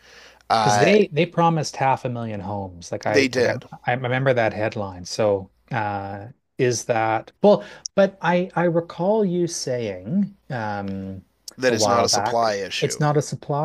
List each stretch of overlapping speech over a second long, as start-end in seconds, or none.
11.7-13.0